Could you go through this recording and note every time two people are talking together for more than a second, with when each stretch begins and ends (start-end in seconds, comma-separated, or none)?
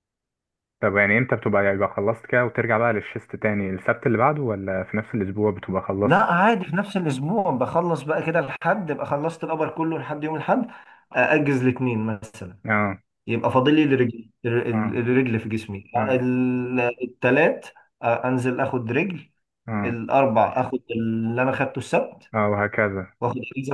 none